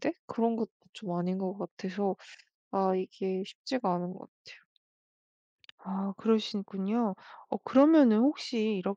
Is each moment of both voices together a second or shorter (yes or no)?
yes